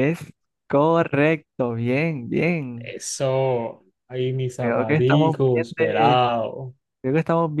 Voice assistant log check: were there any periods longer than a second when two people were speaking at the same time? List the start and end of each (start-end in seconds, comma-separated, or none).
4.6-6.2